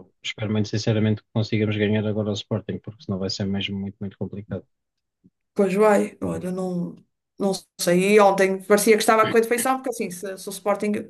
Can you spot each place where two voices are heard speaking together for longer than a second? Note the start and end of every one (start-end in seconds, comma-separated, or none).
none